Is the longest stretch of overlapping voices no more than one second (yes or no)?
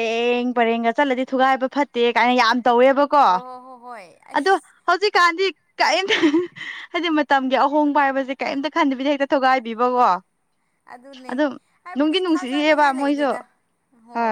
no